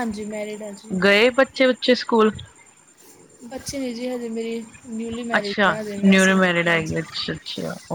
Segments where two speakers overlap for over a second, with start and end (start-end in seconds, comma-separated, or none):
5.3-7.0